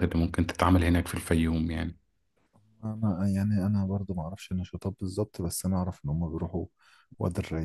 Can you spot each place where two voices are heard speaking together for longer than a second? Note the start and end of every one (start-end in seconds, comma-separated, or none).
none